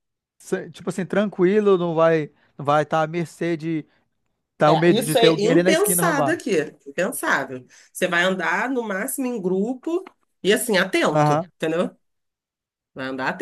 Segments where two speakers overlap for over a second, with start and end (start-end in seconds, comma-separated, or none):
4.7-6.4